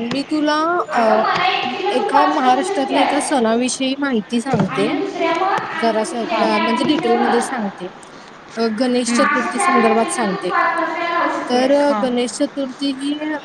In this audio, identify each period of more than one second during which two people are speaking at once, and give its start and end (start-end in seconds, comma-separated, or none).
2.0-3.4, 5.8-7.5, 9.1-10.5